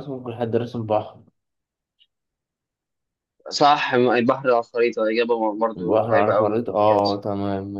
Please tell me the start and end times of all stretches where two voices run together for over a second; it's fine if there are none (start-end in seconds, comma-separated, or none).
5.8-7.2